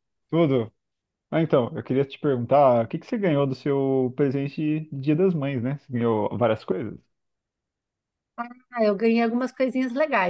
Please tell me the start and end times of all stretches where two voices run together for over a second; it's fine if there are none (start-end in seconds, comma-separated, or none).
none